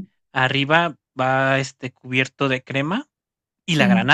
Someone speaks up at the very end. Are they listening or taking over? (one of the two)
listening